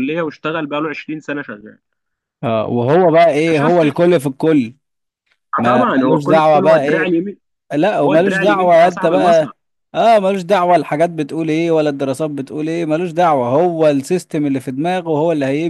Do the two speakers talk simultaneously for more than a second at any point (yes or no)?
yes